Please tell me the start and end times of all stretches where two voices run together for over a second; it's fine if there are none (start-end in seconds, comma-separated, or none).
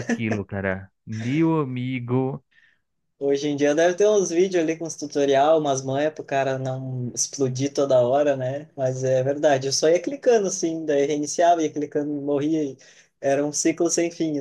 none